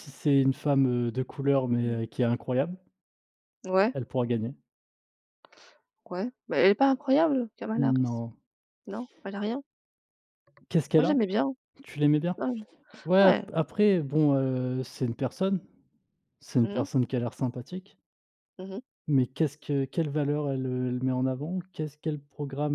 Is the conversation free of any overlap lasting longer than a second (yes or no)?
yes